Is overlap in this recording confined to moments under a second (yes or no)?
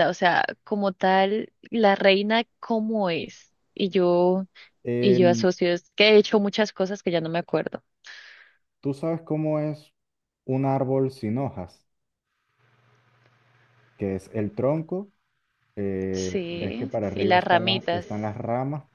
no